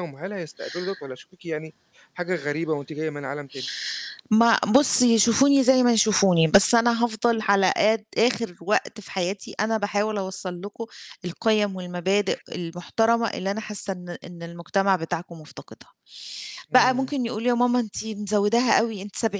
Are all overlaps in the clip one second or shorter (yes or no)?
yes